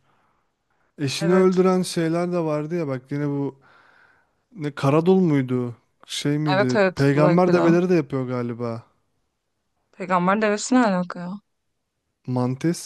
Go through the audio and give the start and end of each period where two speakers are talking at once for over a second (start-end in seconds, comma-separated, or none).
6.5-7.8